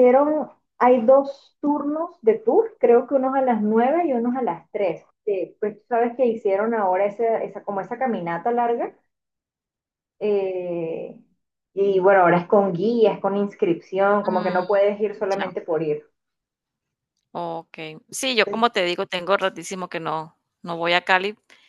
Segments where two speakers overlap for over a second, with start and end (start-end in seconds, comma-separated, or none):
none